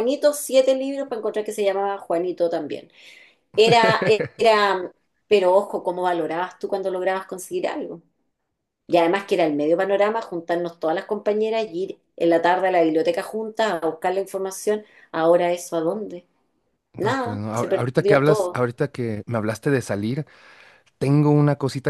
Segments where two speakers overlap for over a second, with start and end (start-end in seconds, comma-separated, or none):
17.0-18.6